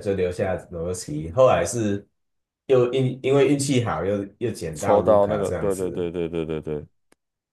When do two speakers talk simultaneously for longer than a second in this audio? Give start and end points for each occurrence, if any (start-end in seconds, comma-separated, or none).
4.8-6.1